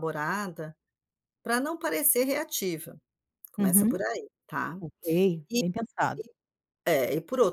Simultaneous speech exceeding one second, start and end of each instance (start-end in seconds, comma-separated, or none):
none